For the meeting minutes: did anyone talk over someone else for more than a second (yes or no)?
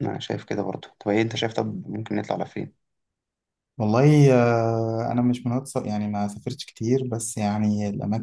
no